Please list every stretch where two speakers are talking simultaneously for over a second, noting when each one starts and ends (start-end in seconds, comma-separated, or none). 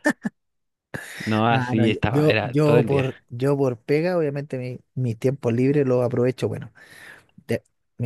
1.5-3.1